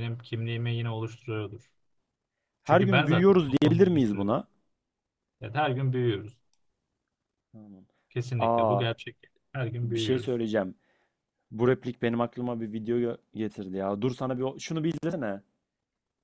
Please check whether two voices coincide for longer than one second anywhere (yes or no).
yes